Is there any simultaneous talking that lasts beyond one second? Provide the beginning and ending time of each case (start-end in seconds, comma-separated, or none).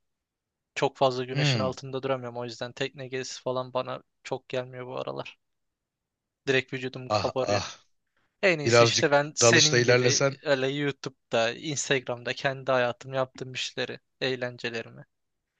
8.6-10.4